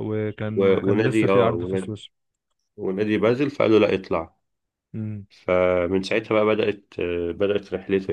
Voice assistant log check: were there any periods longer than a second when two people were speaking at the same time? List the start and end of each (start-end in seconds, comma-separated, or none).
0.6-2.0